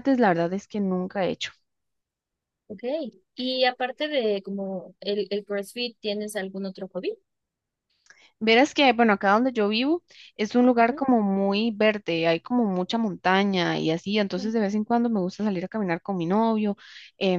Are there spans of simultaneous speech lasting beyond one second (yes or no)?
no